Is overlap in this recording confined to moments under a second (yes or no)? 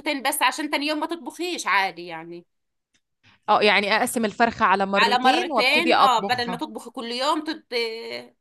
no